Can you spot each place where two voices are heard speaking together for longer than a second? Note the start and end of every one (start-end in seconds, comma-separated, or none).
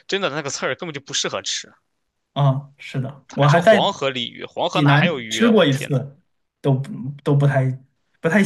4.7-6.0